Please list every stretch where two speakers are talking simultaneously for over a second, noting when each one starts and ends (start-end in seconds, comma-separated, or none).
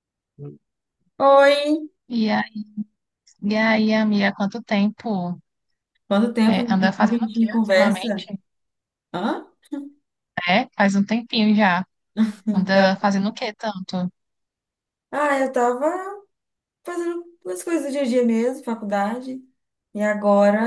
6.4-8.3